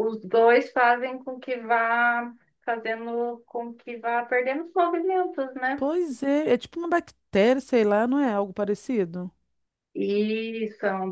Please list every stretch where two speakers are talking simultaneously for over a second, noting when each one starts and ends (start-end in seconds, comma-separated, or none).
none